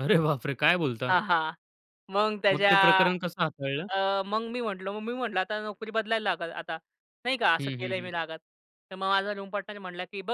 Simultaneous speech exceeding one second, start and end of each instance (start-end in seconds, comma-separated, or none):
none